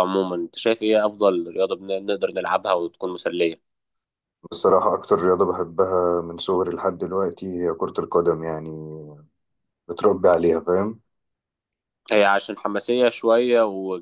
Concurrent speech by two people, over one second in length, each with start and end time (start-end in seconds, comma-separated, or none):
none